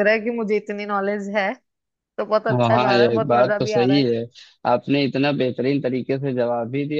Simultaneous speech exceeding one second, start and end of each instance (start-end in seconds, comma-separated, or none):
2.5-4.0